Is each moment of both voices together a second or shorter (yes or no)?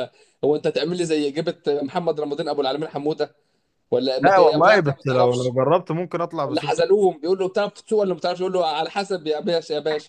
no